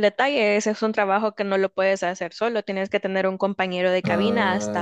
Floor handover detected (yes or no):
no